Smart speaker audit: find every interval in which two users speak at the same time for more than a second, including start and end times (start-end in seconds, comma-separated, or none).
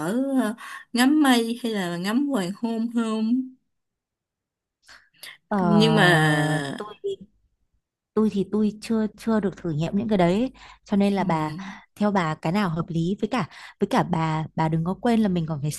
none